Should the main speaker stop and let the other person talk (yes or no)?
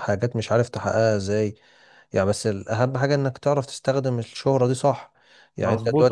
yes